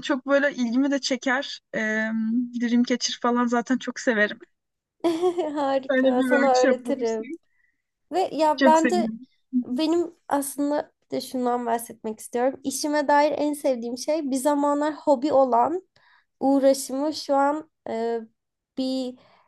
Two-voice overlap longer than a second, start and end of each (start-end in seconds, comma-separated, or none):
5.9-7.2